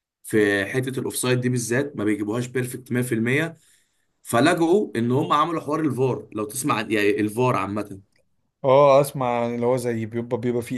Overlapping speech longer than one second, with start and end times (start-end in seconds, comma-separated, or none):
none